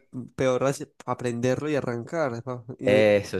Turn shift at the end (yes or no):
no